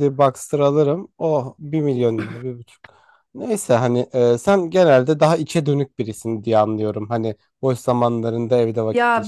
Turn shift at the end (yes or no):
yes